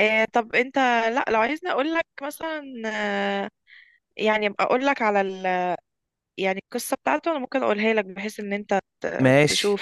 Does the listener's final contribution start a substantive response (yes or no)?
yes